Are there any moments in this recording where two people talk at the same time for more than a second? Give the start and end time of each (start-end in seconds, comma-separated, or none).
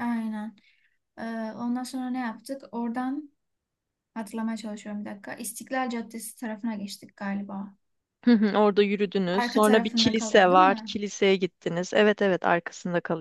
9.3-11.0